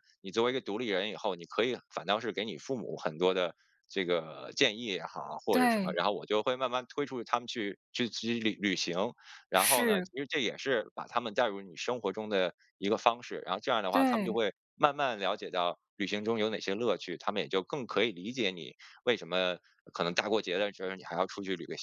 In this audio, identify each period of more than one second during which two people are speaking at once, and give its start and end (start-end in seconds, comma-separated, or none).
none